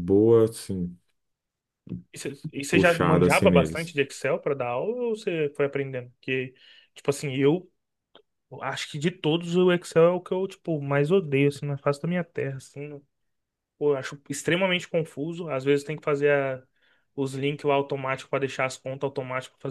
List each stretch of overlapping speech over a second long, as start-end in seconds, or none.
2.7-4.0